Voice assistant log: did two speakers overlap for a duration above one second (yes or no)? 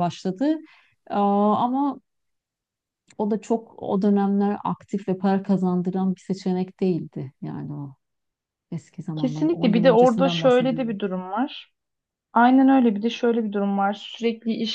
yes